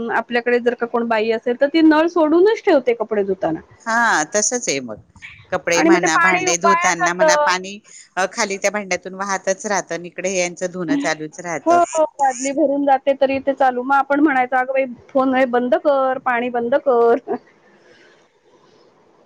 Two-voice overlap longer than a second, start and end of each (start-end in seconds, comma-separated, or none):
5.8-7.5